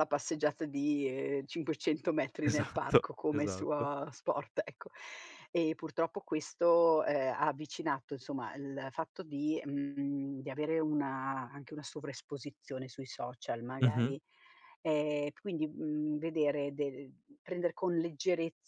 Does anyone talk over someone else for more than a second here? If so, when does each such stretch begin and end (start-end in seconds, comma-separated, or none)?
2.4-3.9